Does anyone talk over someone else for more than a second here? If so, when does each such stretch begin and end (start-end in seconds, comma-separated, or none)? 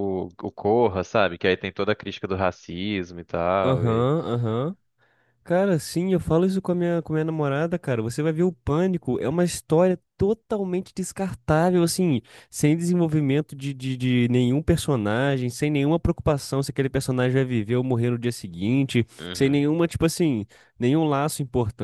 none